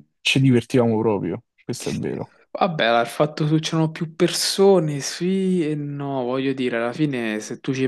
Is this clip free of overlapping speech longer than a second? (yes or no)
yes